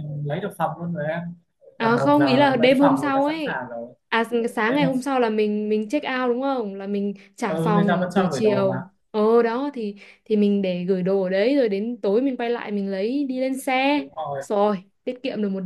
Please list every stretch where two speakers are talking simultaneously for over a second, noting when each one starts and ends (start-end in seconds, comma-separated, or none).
1.8-3.6, 7.5-8.8